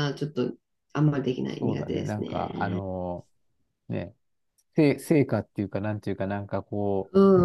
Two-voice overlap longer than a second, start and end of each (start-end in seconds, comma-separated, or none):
1.4-2.8